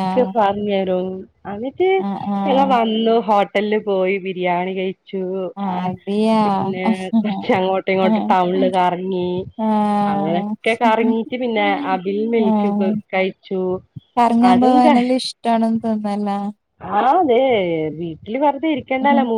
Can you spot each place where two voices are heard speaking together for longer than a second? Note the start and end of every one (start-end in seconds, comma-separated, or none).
none